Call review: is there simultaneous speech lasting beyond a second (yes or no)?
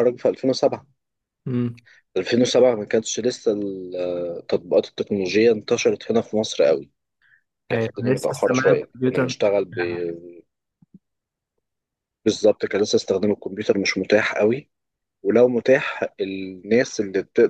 yes